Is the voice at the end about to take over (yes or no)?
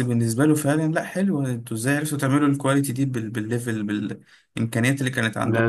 yes